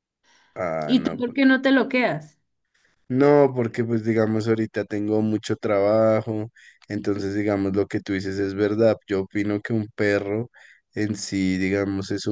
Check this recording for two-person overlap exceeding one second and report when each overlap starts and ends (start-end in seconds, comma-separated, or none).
none